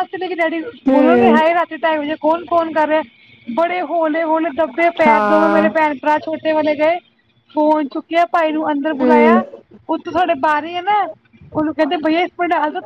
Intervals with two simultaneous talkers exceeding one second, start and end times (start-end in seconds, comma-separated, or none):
none